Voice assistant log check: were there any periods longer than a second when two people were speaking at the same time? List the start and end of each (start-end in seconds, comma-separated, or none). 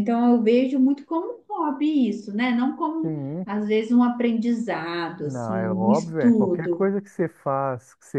5.2-6.9